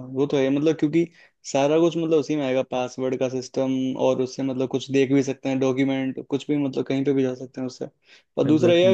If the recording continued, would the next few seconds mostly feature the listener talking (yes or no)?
no